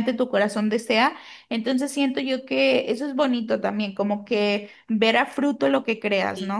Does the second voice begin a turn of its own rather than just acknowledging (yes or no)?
yes